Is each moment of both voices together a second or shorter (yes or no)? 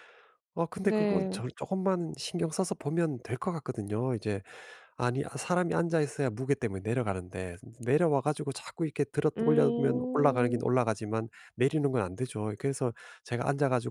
no